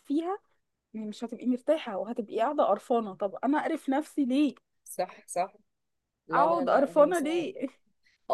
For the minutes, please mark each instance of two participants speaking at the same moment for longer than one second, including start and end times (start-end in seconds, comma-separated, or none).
6.3-7.6